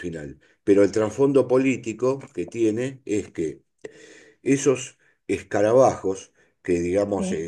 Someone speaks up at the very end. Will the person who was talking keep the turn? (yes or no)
yes